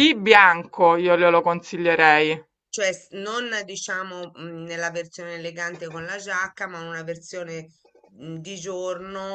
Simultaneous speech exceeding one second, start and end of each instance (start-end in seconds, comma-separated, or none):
none